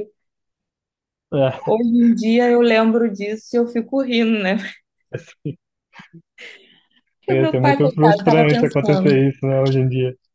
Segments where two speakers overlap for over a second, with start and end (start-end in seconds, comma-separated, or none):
7.3-9.2